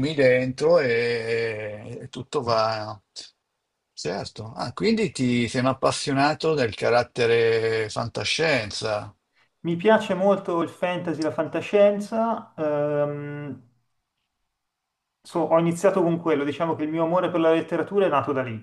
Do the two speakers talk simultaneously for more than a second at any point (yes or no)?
no